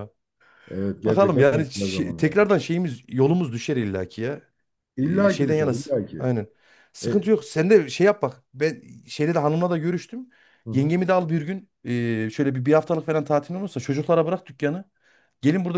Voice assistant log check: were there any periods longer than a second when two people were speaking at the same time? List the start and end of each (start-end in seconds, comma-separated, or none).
1.0-2.5, 5.0-6.3